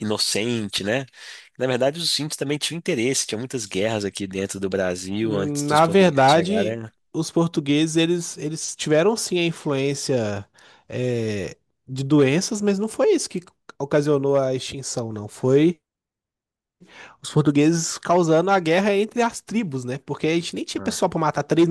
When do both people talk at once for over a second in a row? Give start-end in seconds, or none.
5.2-6.9